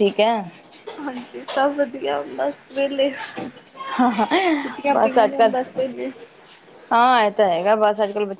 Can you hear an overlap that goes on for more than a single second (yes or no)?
no